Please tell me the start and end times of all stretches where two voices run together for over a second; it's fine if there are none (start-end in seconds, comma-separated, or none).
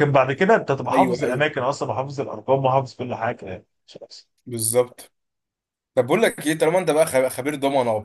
none